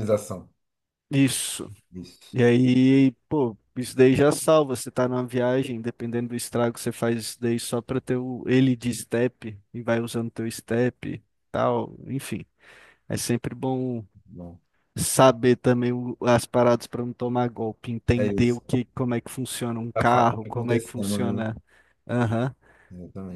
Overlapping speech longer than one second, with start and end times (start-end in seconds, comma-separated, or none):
19.9-21.4